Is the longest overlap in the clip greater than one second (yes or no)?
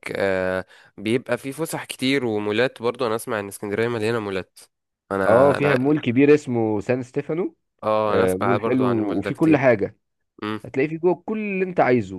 yes